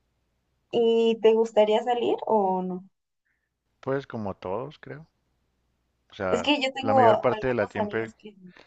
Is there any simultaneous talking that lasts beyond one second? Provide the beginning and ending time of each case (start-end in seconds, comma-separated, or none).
6.3-8.0